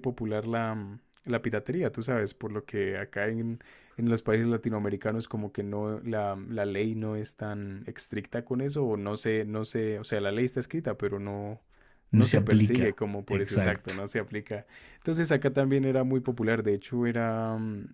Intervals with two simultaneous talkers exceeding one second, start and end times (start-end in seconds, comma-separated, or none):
12.1-13.9